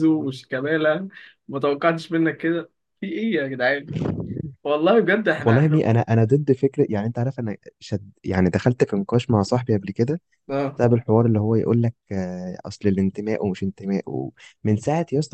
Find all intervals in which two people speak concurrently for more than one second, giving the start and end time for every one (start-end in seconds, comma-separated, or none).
none